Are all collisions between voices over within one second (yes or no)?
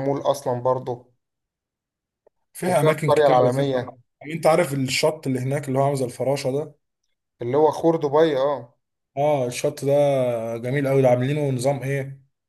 no